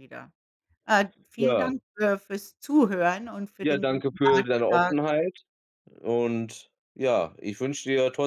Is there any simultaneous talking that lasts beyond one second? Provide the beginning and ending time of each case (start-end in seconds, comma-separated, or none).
3.6-4.9